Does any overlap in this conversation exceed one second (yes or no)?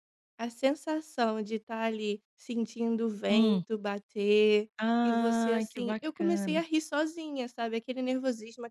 yes